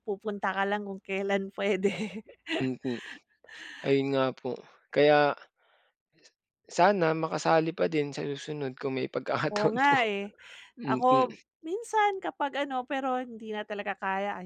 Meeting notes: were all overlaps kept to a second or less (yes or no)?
yes